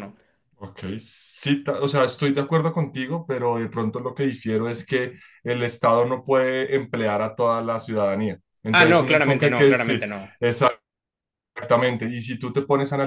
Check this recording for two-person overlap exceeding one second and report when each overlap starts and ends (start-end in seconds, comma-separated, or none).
8.7-10.0